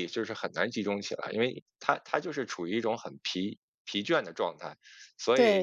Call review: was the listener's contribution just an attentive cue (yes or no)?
no